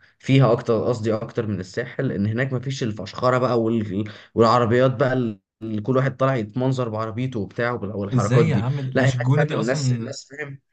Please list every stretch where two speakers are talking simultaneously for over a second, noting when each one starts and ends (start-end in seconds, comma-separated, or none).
8.1-10.1